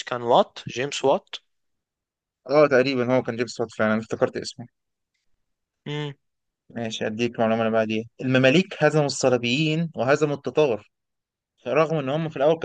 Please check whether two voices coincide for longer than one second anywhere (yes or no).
no